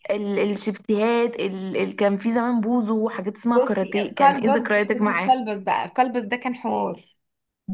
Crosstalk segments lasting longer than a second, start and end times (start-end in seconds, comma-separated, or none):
3.5-5.3